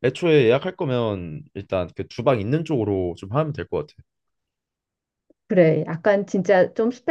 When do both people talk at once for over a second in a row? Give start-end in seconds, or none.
none